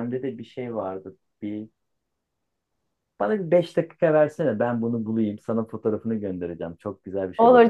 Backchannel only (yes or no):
no